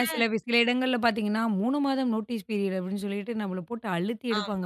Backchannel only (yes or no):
no